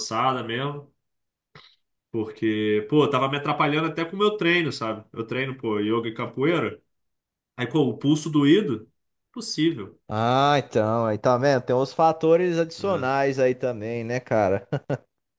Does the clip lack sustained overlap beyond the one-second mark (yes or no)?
yes